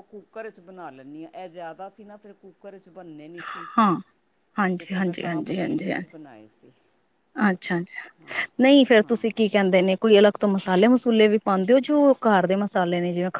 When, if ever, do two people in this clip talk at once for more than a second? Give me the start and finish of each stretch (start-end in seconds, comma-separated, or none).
4.8-6.2